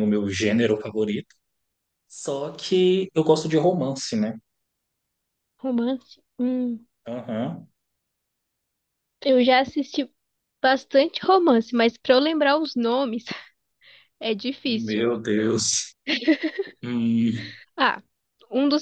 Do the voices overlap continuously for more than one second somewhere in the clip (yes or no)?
no